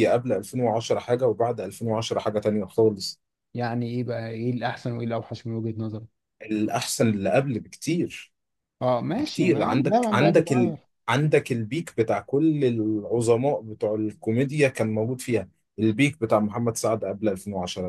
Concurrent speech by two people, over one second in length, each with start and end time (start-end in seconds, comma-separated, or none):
9.1-10.8